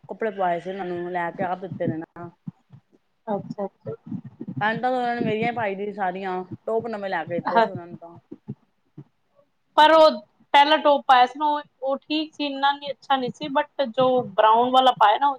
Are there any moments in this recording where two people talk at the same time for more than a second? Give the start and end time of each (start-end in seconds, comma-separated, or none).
none